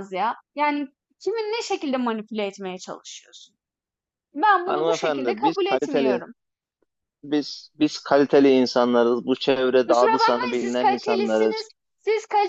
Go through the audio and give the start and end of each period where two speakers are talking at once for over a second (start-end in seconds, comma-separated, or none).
4.7-6.2, 9.9-11.6